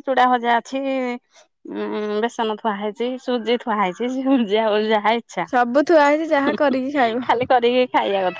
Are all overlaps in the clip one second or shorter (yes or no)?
yes